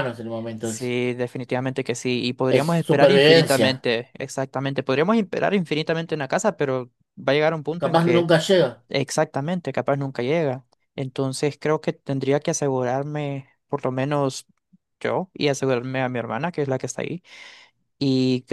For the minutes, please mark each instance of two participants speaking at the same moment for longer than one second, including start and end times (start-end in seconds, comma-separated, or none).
2.5-3.9